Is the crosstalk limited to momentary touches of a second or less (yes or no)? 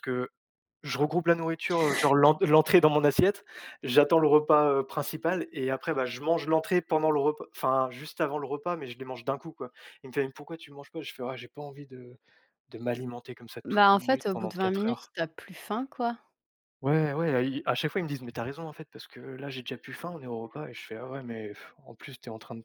no